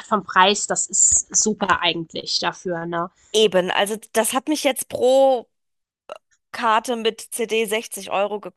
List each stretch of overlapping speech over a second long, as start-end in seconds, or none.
none